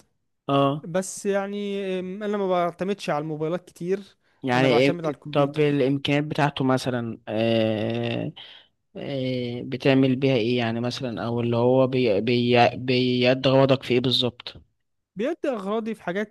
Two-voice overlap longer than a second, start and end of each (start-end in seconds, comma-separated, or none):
4.5-5.8